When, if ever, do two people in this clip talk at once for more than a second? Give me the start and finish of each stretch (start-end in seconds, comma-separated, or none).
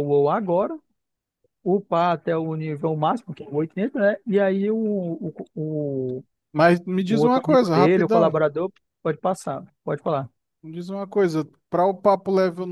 7.1-8.4